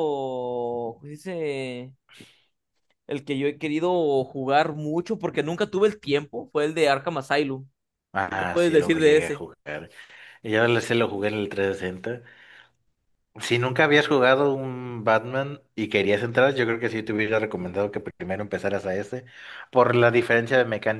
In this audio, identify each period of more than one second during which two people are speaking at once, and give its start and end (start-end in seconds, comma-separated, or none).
8.2-9.4